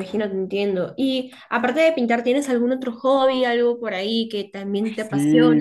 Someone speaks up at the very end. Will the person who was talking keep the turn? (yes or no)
no